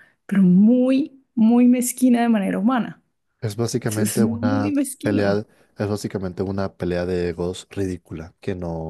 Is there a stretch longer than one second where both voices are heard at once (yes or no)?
yes